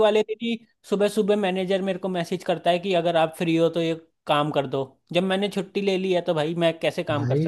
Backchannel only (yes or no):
no